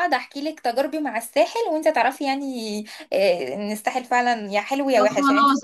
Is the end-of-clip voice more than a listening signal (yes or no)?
yes